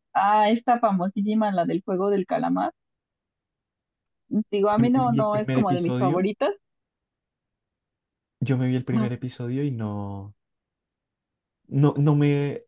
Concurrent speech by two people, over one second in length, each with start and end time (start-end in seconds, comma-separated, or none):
4.8-6.2